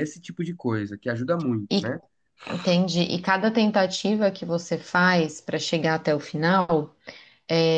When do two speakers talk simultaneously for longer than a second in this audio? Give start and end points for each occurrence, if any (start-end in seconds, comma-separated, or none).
none